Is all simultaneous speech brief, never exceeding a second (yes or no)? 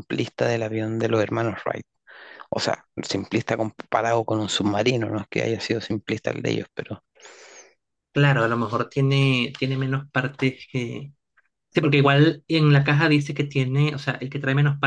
yes